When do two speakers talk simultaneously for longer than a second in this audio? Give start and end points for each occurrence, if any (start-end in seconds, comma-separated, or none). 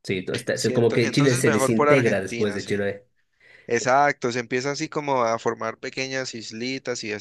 0.5-2.9